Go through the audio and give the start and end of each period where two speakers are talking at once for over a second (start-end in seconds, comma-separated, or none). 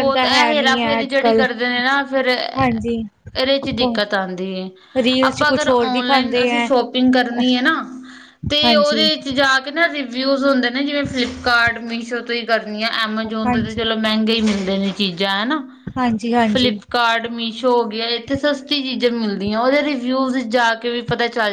5.2-6.7